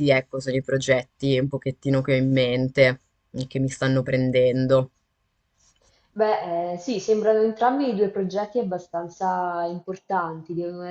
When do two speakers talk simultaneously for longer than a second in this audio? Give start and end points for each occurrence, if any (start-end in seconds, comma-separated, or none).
none